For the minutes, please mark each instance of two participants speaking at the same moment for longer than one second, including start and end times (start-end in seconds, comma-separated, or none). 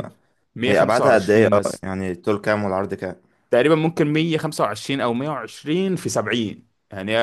0.7-1.9